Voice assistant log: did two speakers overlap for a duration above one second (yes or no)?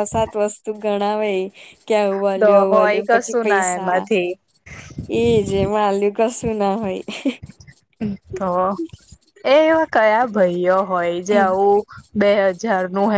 yes